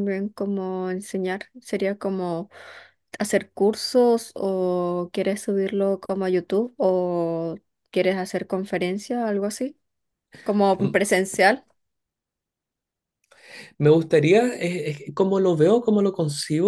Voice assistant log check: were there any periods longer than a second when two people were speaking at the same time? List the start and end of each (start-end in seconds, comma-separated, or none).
none